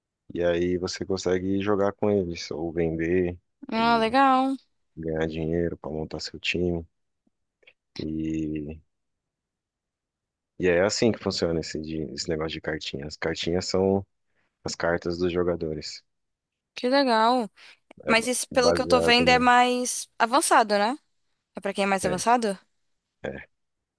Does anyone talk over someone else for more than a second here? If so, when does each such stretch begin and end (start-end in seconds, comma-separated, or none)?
18.1-19.4